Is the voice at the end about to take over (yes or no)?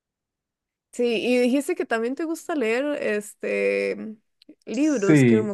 yes